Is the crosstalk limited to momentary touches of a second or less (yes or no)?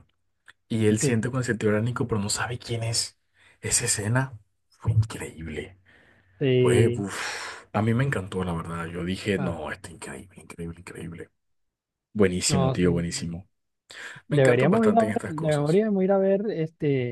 no